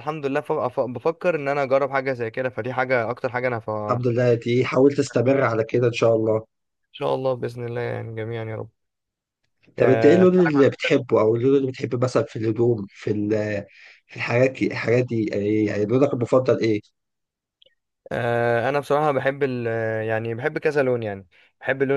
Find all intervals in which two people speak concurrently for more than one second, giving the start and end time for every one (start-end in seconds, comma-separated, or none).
9.8-11.1